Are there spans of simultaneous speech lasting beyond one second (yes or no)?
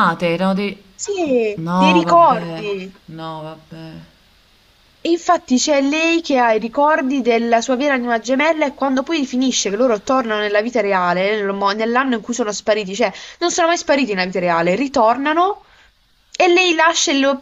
yes